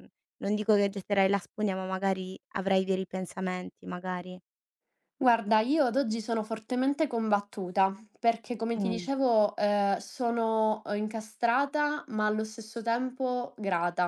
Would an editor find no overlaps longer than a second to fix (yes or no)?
yes